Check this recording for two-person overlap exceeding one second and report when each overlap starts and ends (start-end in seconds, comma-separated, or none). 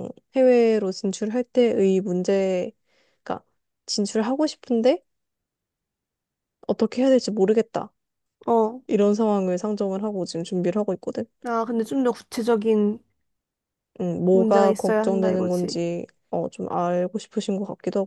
14.3-15.8